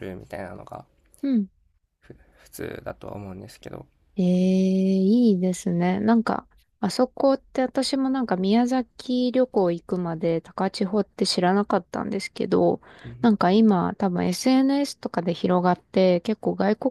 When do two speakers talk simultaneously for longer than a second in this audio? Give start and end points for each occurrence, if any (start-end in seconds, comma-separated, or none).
none